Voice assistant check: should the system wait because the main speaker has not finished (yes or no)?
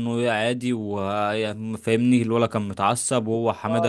no